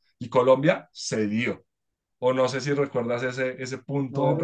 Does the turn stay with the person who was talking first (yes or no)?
no